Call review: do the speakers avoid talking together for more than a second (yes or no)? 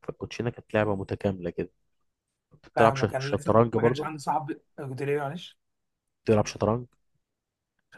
no